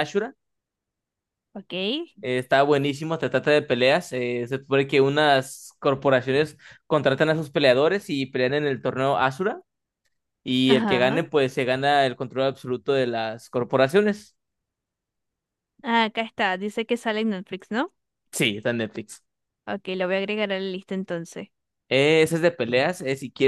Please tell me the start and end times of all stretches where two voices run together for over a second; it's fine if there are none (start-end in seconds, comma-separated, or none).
none